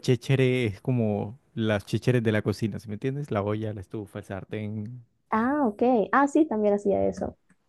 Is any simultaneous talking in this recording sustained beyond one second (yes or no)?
no